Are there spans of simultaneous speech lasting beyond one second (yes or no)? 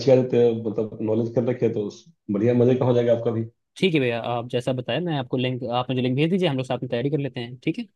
no